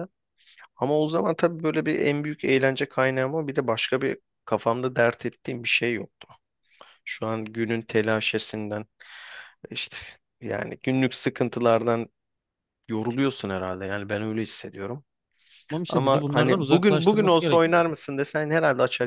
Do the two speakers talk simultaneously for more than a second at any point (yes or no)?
yes